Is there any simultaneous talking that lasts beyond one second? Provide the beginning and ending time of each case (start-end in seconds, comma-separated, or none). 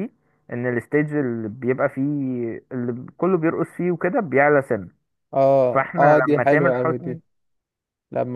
5.7-7.2